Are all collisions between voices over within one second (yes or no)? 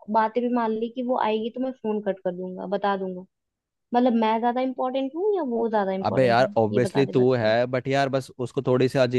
no